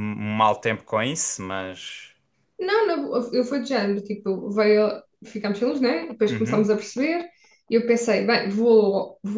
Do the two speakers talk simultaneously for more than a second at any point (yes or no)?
no